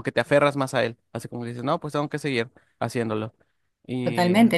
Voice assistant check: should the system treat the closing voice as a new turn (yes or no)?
yes